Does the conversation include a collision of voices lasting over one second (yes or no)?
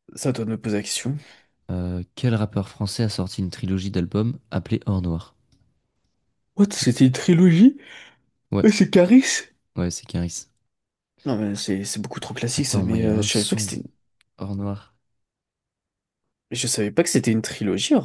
yes